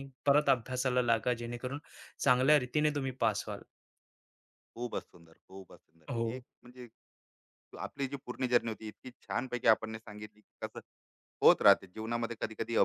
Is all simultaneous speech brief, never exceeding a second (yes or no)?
yes